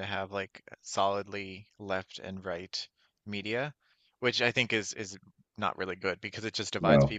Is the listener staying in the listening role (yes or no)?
yes